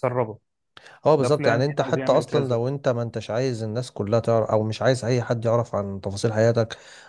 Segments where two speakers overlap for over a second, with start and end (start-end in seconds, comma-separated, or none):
1.2-2.6